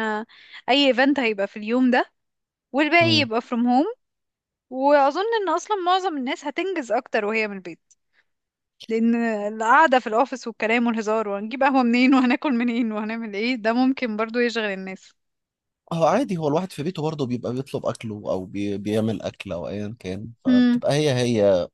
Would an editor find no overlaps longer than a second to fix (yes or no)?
yes